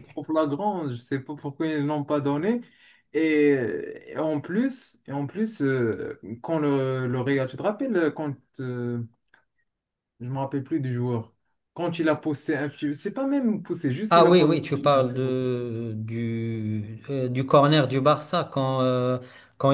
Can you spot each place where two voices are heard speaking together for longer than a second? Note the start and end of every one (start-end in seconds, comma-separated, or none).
none